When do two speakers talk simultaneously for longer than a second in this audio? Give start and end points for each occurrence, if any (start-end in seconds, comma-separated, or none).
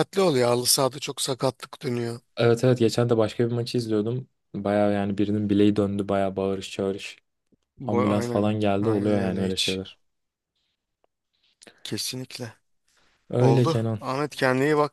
7.9-9.8